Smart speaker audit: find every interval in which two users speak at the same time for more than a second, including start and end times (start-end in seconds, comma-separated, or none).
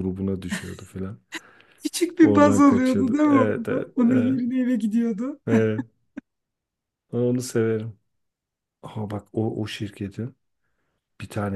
2.2-4.4